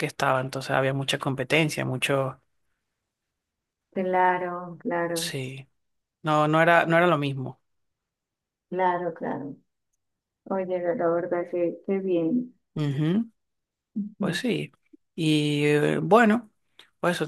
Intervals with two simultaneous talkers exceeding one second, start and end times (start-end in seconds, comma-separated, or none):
none